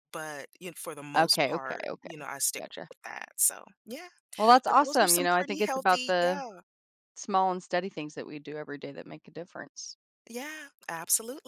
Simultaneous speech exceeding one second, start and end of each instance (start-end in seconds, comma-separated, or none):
1.2-2.9, 4.7-6.4